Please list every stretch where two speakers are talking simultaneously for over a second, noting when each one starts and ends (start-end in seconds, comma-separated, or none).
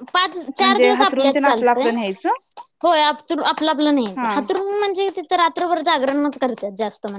0.6-1.9